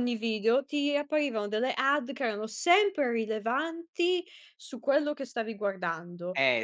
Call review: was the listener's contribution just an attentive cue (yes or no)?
yes